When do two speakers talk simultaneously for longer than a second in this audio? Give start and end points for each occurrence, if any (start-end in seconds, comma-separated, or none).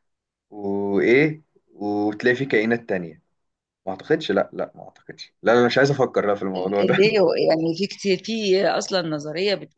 none